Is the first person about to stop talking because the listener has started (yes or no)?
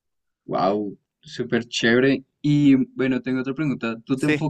no